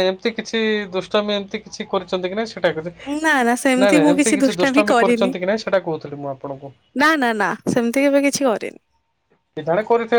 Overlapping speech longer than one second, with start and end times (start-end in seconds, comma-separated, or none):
3.2-5.3